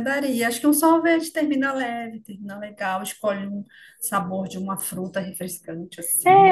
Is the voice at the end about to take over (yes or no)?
yes